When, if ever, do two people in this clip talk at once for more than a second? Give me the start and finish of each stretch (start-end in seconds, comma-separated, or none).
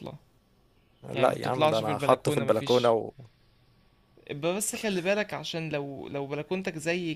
1.1-3.0